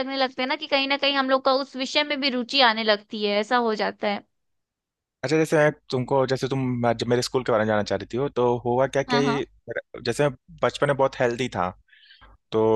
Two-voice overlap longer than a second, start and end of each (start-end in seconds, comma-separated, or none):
none